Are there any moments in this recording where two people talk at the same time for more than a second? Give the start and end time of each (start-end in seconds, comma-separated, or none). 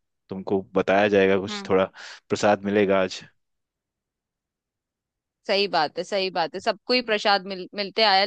none